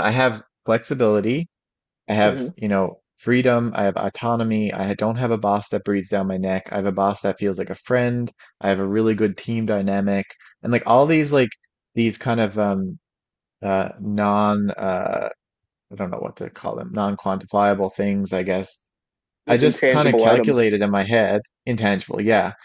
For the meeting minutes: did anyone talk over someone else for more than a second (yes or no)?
yes